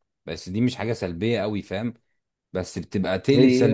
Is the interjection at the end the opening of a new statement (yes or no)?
no